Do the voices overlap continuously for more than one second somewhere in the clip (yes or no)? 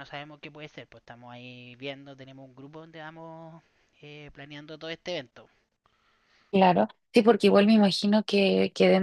no